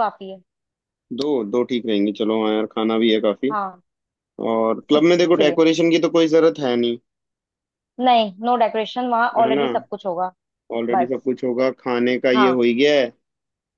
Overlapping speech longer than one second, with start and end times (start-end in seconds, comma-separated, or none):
none